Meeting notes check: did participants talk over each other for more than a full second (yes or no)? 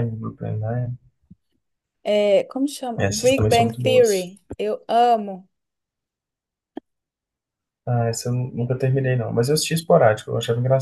yes